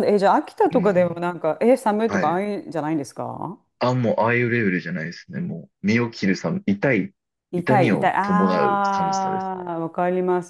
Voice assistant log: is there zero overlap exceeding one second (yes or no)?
no